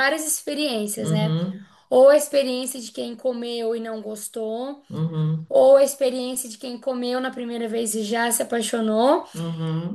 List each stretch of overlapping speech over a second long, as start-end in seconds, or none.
none